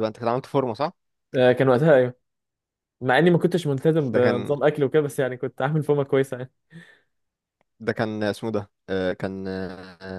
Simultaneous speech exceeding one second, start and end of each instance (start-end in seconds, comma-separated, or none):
none